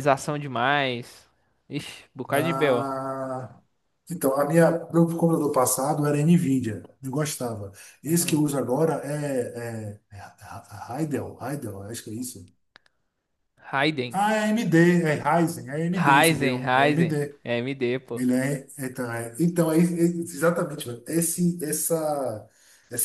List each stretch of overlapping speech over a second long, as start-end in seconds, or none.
15.9-17.4